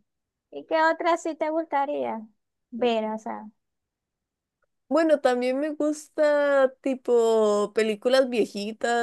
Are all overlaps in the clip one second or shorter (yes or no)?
yes